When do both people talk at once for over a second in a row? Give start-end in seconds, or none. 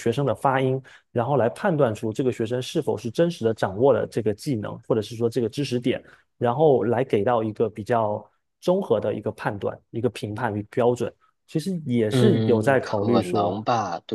12.1-13.6